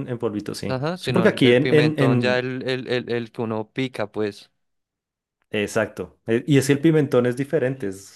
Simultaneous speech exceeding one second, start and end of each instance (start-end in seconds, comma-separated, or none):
0.7-2.5